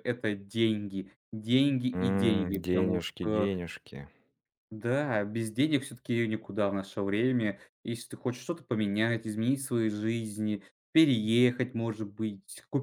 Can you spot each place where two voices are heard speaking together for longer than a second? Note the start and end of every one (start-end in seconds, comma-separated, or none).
1.9-3.5